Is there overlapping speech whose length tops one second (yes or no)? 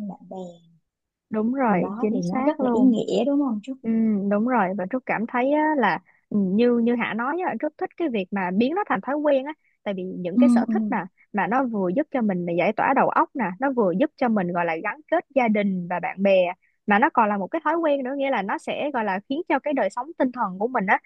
yes